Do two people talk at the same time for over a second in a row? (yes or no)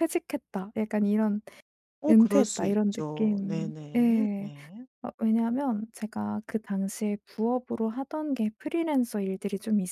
yes